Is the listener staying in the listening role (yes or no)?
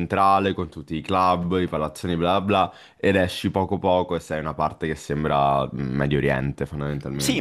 no